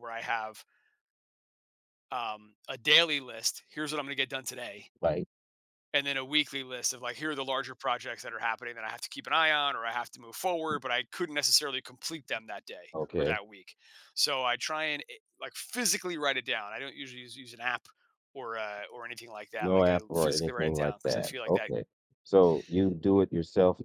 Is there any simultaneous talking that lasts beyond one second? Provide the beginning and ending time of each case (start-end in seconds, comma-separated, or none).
19.6-21.7